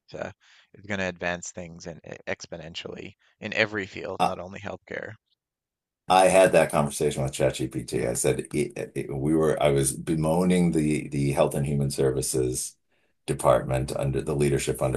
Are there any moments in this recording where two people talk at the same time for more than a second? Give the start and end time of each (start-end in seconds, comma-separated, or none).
none